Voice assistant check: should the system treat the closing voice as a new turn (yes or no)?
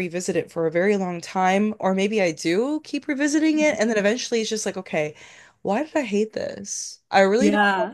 no